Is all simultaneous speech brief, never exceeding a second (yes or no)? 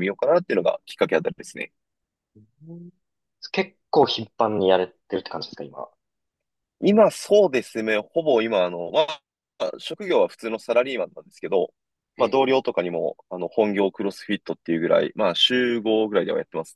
yes